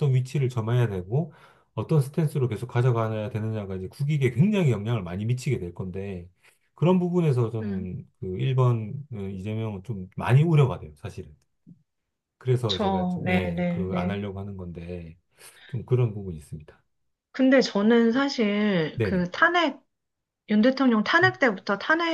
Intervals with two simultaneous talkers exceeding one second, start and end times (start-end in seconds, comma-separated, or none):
12.7-14.2